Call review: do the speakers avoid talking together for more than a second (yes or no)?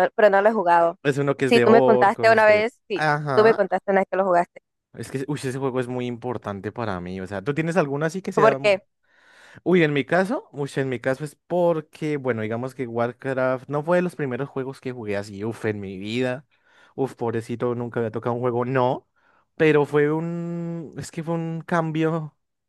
no